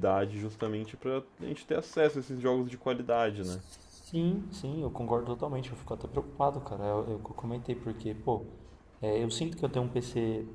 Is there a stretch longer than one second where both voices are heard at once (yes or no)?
no